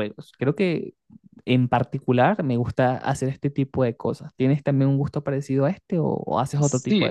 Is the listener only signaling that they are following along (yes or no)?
no